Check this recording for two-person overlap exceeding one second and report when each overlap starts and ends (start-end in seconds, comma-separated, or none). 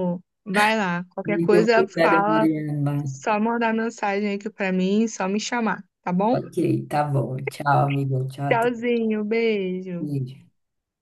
1.3-2.5